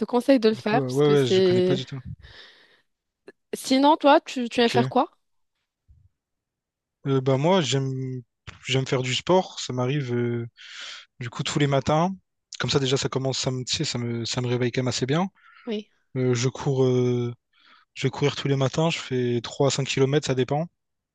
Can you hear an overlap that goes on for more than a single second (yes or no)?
yes